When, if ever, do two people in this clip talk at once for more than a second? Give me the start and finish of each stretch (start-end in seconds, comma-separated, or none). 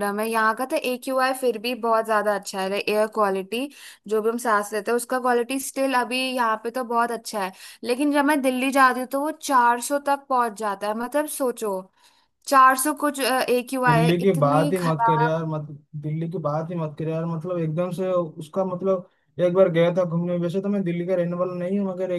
13.9-15.4